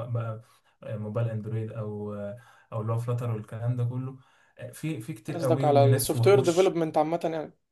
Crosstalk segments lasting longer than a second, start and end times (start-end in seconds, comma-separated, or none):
5.3-6.8